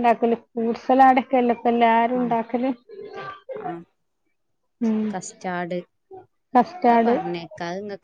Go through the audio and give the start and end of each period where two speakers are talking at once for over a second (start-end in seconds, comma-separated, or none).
none